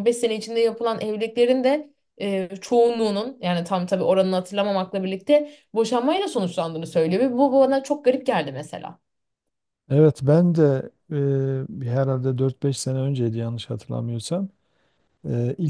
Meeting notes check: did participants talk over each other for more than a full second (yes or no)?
no